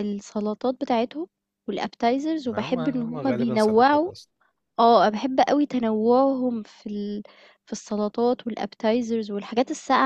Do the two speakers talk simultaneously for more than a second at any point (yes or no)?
yes